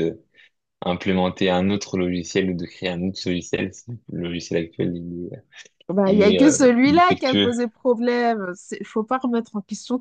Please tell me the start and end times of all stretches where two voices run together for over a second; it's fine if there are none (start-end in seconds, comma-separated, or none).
6.1-7.5